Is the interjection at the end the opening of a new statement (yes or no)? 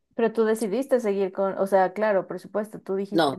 yes